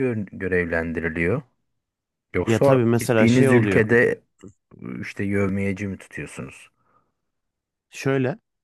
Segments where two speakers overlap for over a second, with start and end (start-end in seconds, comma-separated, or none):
2.4-3.8